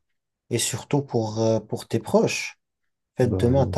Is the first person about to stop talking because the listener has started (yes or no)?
no